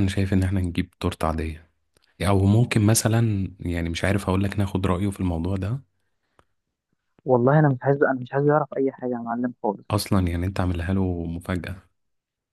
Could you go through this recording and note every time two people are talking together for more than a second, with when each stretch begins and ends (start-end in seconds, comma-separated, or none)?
none